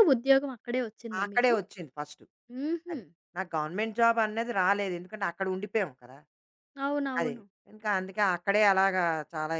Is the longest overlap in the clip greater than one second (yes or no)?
no